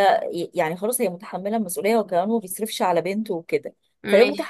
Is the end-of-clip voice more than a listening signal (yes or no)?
no